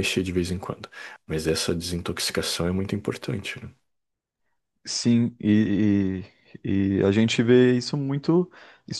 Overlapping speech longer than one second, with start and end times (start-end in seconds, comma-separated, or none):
none